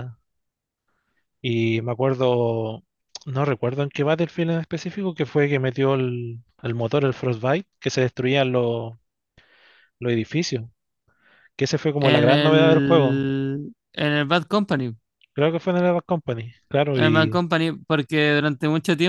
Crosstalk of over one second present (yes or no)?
yes